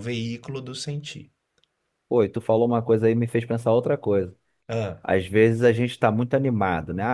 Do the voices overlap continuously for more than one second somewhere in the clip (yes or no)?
no